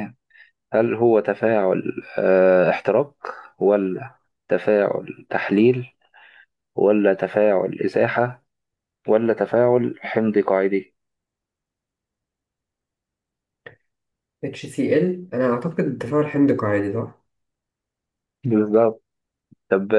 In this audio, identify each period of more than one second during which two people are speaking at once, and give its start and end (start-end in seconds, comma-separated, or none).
none